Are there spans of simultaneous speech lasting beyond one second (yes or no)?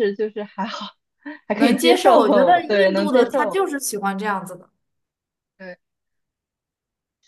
yes